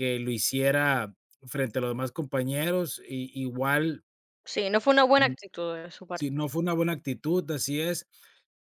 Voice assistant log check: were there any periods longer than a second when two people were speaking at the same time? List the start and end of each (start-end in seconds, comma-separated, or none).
none